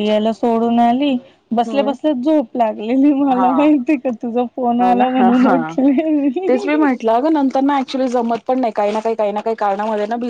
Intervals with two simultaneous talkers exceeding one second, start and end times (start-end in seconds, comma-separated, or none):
none